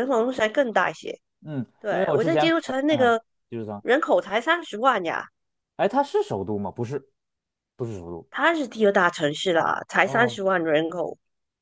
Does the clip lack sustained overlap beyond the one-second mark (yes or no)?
no